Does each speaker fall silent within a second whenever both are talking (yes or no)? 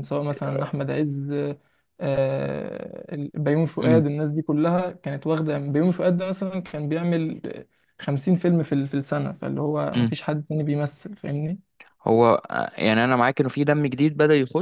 yes